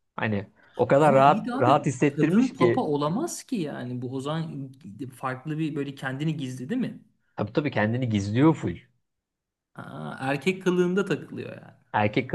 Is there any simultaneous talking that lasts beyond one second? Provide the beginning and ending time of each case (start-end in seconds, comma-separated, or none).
1.0-2.9